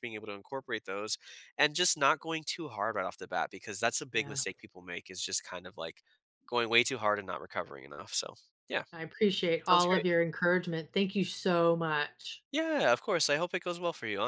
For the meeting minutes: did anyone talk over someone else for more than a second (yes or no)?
no